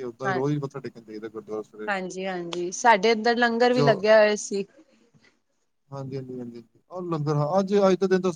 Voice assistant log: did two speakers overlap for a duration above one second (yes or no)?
no